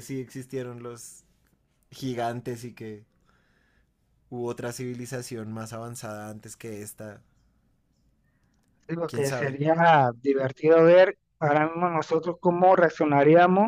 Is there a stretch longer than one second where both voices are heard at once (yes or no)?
no